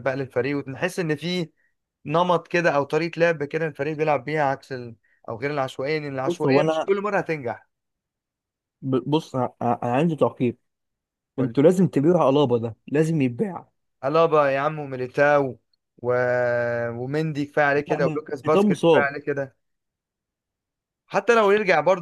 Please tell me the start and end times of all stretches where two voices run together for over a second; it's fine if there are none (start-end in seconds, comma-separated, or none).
17.9-19.1